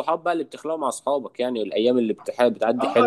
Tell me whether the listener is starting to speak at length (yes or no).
yes